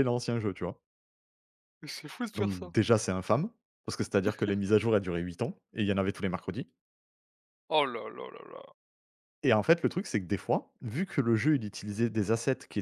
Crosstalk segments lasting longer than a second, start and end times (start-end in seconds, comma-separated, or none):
none